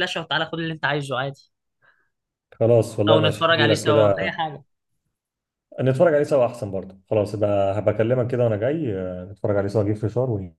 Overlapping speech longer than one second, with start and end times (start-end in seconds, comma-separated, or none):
3.1-4.3